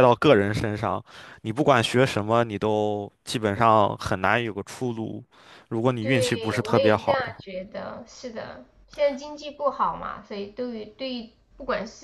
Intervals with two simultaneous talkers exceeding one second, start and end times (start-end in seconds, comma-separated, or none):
6.0-7.4